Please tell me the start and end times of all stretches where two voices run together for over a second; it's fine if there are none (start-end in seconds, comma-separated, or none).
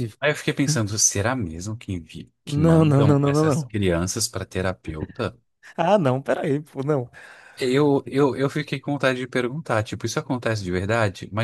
2.5-3.8